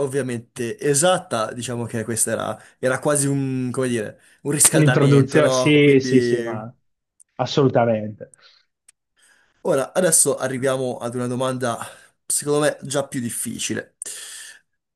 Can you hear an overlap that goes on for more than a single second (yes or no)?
yes